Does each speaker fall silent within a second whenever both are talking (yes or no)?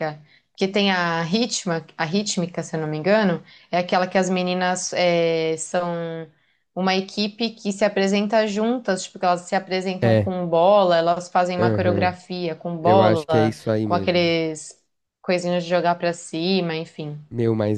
no